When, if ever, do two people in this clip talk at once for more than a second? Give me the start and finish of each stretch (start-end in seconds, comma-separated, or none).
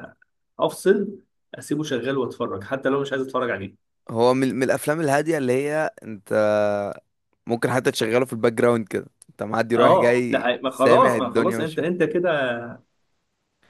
9.8-11.9